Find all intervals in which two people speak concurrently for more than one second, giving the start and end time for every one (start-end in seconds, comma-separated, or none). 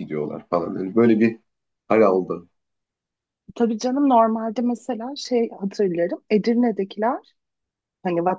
none